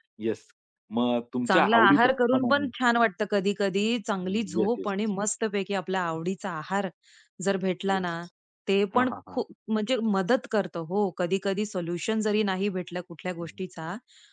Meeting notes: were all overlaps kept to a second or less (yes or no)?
no